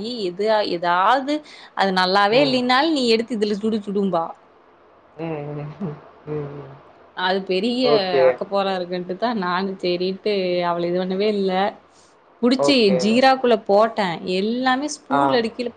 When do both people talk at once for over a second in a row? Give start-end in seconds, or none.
none